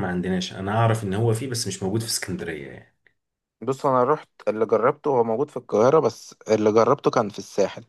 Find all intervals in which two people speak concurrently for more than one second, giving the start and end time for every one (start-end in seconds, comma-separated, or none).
none